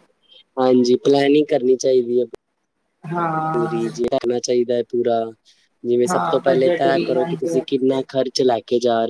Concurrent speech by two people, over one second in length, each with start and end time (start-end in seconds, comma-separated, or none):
6.1-8.0